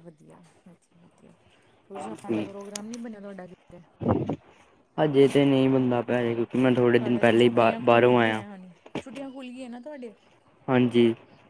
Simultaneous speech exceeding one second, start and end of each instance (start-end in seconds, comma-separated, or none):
7.0-8.4